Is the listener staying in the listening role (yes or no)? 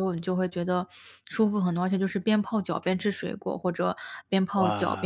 yes